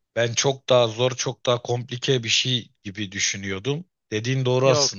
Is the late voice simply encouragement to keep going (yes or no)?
no